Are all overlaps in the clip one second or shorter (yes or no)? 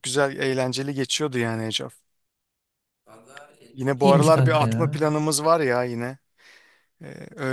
no